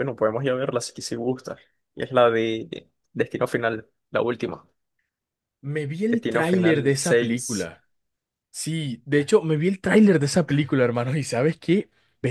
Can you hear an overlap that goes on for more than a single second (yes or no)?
yes